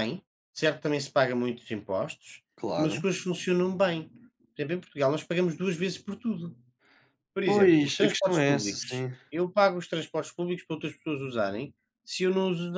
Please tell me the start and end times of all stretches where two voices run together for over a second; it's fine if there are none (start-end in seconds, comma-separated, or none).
7.4-9.1